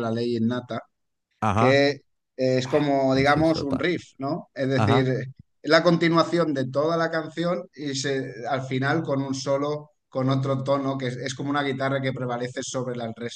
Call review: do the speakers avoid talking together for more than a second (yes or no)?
no